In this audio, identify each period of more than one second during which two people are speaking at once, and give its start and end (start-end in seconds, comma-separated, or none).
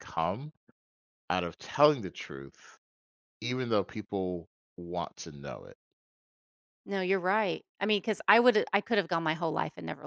none